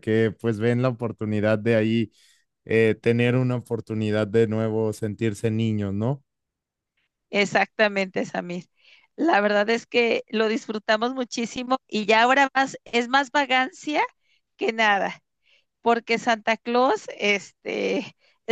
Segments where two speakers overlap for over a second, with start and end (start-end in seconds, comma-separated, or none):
none